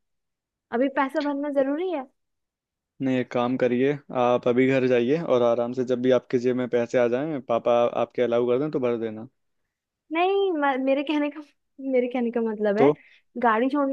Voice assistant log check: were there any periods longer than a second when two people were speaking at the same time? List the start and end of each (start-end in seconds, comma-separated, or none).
none